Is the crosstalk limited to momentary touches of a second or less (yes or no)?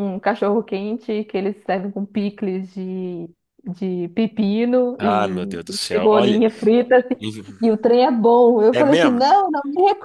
no